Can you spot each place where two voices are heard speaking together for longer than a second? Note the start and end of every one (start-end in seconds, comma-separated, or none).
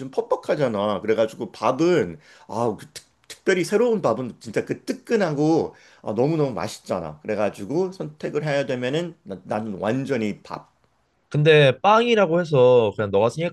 none